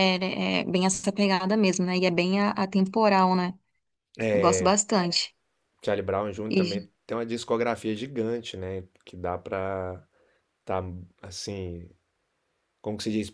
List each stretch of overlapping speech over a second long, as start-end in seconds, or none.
none